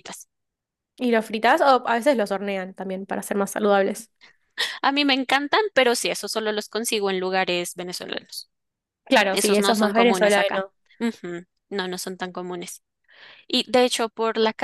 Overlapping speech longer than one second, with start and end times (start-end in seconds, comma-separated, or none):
9.3-10.7